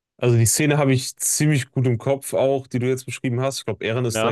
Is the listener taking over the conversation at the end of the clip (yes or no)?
no